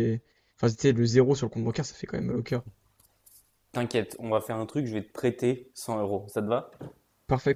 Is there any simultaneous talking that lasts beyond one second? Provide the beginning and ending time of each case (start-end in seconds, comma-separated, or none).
none